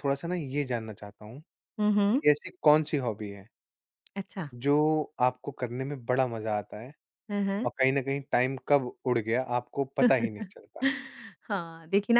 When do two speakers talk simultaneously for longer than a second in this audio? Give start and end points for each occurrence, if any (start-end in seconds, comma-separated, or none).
none